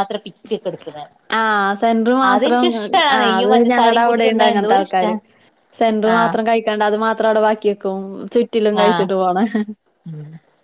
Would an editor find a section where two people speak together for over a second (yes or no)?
yes